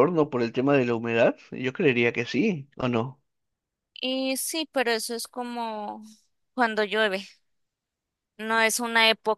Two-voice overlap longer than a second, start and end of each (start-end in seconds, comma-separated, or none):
none